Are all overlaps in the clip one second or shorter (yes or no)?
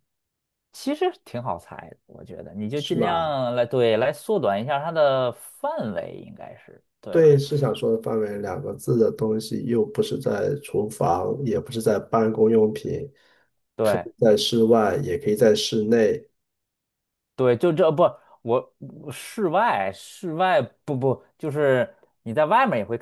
yes